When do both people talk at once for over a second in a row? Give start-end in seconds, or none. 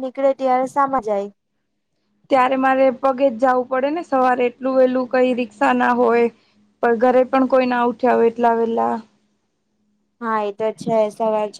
none